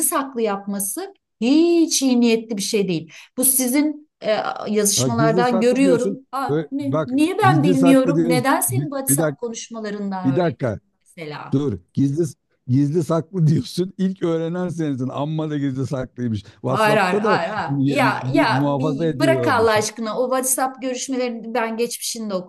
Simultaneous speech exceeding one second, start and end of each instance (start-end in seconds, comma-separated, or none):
5.0-9.5, 16.7-19.8